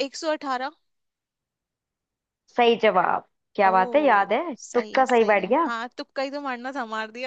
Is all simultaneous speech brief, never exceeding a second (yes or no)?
no